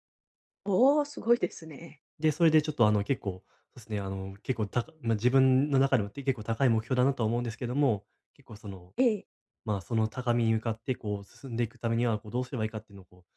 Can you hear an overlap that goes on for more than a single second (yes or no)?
no